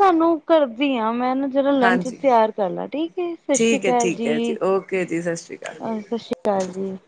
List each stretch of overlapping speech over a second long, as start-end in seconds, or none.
3.5-5.8